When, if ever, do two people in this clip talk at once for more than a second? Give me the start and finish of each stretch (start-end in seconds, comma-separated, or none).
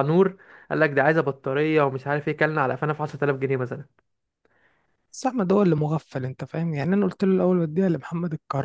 none